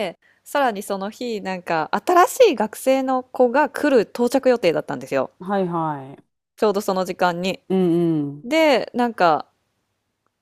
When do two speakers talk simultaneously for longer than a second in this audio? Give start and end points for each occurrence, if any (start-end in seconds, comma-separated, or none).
none